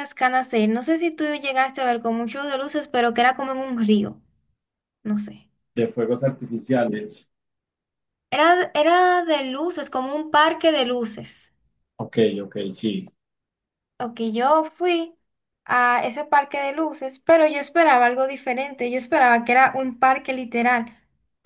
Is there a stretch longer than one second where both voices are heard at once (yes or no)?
no